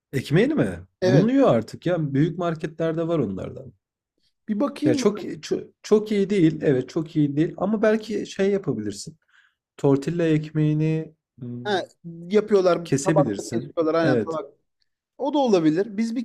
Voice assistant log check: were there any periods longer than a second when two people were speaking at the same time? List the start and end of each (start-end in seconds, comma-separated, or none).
12.8-14.4